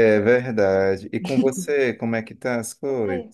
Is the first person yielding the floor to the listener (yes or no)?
yes